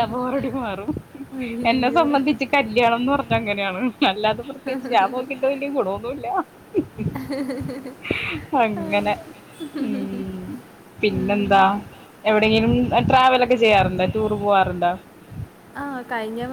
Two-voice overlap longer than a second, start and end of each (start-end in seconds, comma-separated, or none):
none